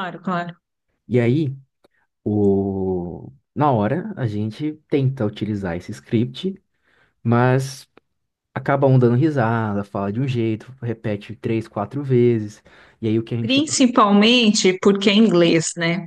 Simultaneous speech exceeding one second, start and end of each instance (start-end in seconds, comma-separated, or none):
none